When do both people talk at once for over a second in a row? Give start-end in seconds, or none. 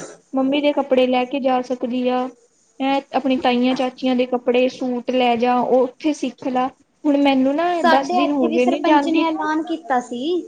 7.8-9.5